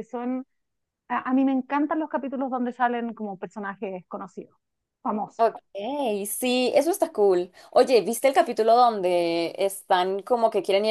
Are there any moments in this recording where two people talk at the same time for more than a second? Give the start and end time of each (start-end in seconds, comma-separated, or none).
none